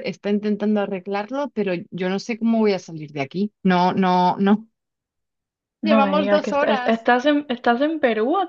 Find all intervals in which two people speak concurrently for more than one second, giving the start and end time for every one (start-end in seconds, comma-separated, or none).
5.8-7.1